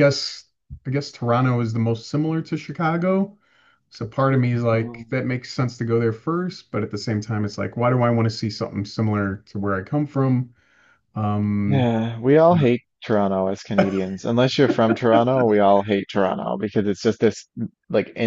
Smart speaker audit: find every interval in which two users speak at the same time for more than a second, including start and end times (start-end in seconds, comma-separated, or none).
none